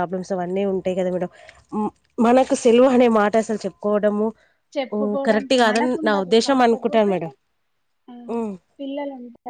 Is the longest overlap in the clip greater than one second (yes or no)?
yes